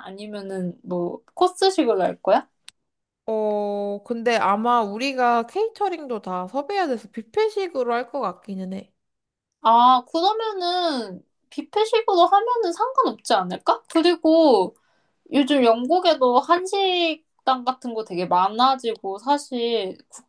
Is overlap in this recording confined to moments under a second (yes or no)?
yes